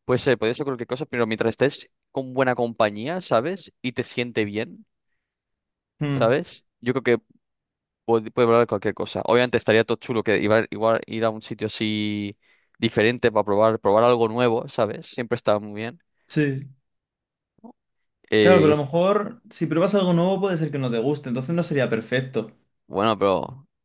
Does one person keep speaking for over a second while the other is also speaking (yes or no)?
no